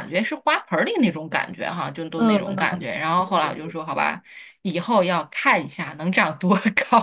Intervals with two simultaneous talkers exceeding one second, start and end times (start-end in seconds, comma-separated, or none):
2.1-3.7